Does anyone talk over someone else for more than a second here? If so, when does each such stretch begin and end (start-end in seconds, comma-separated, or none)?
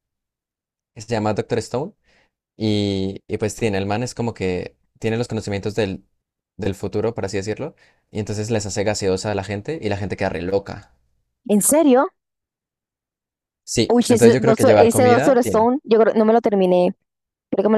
13.9-15.7